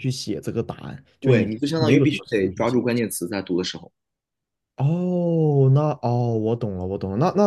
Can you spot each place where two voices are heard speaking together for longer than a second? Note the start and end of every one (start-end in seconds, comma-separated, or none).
1.2-2.8